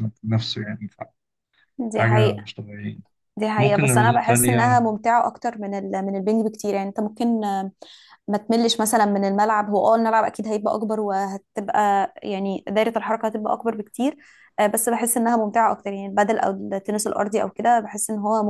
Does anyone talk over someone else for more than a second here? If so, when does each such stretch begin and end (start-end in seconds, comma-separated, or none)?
3.6-4.9